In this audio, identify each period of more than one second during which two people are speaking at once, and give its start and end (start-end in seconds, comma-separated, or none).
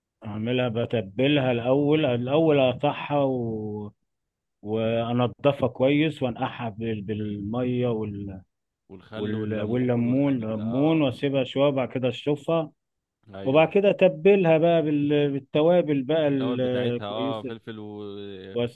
9.1-11.1, 16.3-17.5